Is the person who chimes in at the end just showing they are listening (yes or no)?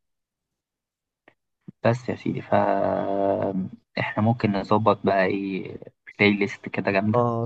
no